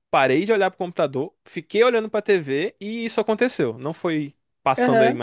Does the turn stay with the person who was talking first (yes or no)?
no